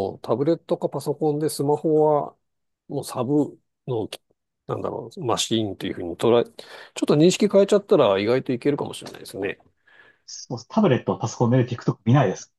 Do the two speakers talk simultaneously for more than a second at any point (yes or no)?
no